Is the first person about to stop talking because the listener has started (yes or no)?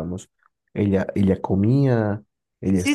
yes